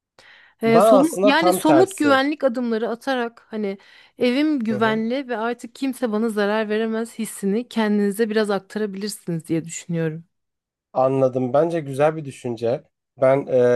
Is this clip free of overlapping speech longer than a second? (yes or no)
no